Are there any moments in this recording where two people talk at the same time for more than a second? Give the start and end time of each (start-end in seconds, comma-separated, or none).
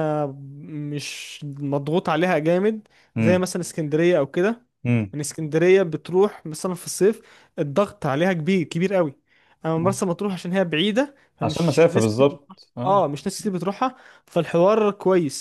11.4-13.1